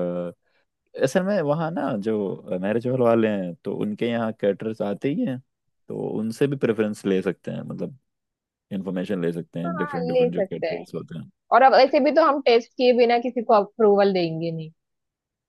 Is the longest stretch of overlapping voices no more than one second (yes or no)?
no